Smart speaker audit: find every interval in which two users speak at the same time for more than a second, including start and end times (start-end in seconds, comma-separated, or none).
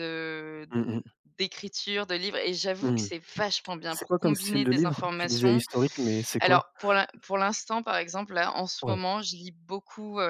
3.9-5.6